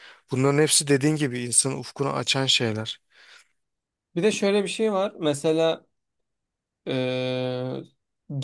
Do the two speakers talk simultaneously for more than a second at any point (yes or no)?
no